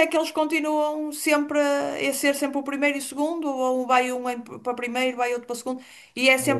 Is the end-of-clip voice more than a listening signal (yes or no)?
no